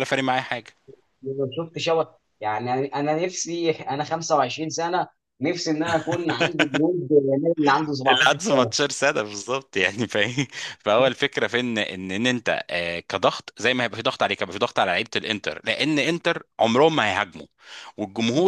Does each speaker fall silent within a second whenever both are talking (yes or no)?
yes